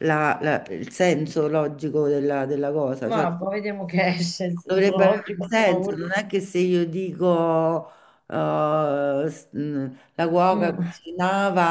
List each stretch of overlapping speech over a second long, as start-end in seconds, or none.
4.7-6.0